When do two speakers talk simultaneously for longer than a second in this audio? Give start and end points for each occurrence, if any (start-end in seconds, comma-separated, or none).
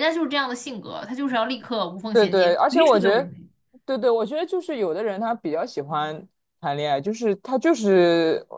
2.1-3.3